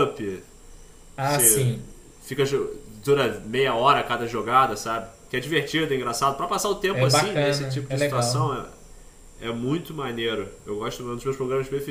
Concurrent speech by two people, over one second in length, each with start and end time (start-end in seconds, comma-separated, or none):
6.9-8.6